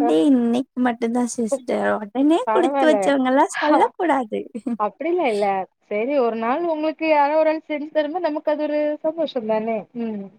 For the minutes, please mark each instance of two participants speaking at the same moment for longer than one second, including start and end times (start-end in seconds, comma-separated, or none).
none